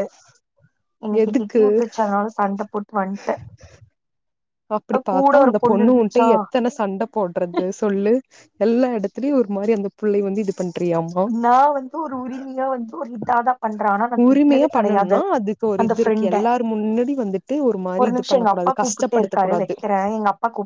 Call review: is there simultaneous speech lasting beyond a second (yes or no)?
yes